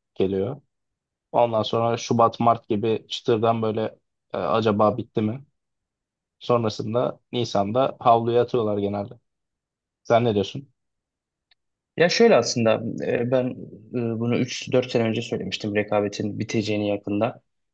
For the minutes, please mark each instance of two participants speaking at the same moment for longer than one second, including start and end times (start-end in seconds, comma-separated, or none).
none